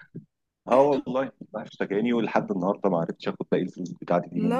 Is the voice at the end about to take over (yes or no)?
no